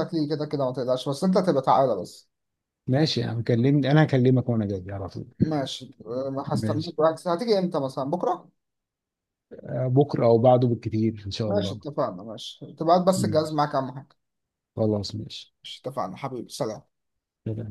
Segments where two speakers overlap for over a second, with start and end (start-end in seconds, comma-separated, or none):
none